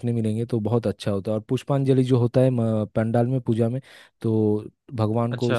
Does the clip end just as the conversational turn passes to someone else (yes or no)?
no